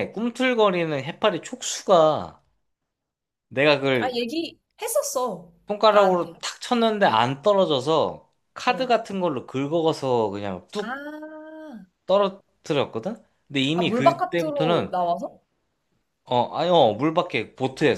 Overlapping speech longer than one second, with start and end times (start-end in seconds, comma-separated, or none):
13.7-14.9